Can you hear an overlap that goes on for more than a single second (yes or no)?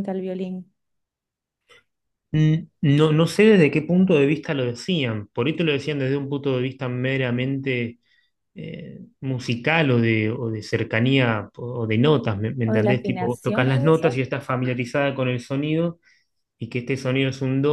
yes